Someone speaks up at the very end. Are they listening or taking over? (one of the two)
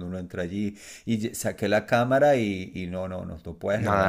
taking over